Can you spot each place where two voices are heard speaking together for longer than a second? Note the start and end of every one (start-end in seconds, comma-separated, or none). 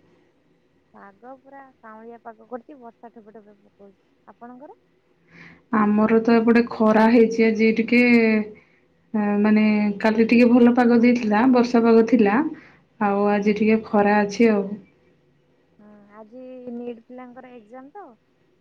none